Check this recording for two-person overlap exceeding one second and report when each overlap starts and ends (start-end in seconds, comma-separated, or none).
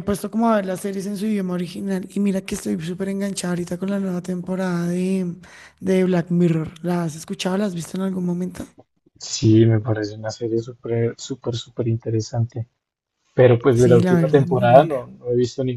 13.7-15.1